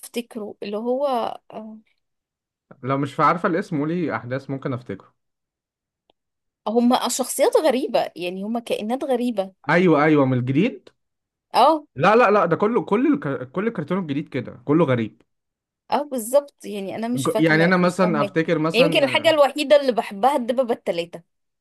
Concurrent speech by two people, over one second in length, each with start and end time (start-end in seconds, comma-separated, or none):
17.1-19.3